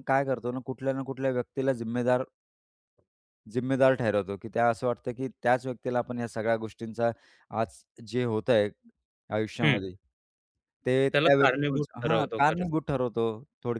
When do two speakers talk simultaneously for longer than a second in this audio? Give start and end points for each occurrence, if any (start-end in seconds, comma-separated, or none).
11.1-12.7